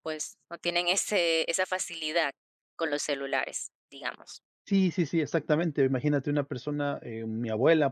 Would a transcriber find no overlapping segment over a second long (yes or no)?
yes